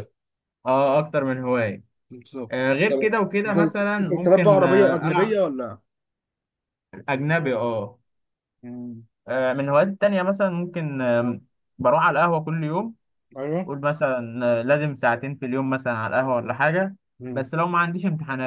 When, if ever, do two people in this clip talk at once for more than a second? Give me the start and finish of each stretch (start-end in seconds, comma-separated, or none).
2.5-5.4